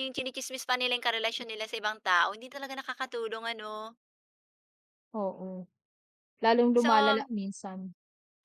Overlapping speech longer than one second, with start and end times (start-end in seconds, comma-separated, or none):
none